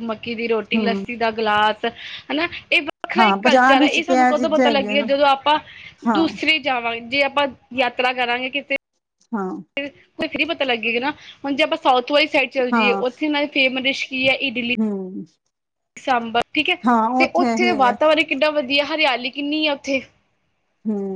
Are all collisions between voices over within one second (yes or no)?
no